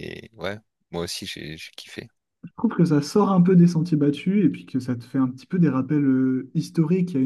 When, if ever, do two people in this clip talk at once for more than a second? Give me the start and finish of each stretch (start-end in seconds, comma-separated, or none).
none